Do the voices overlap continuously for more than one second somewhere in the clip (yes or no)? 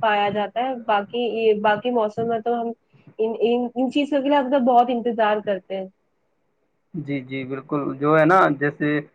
no